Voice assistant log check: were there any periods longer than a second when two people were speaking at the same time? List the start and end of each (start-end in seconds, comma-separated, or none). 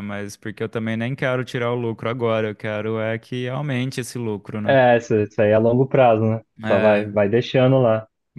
none